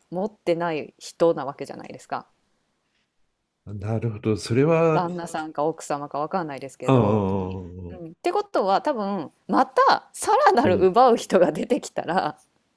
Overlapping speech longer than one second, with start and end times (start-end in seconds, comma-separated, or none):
none